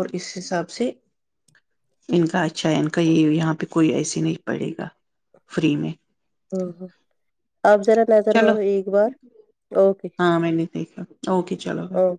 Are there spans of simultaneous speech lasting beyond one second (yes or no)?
no